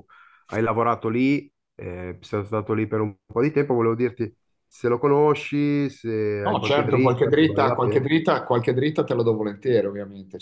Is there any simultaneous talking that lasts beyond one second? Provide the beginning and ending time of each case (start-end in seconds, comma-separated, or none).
6.5-8.1